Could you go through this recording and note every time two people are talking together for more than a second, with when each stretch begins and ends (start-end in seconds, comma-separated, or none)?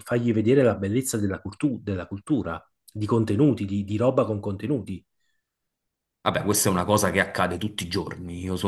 none